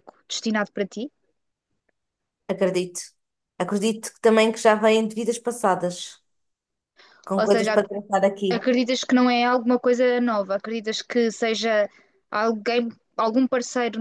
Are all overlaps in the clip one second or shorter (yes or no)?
yes